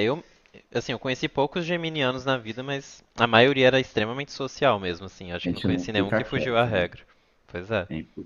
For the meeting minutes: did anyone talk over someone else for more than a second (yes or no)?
yes